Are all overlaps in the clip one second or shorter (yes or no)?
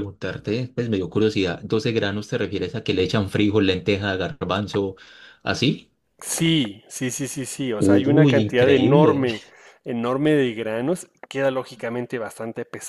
no